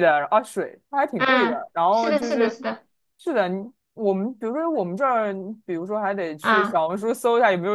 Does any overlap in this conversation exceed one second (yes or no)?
yes